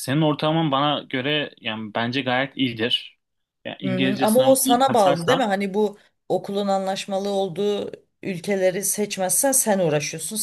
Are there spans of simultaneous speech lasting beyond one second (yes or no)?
yes